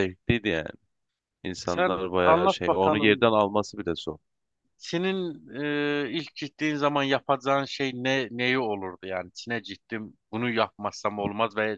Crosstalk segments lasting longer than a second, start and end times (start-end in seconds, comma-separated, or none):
1.6-3.3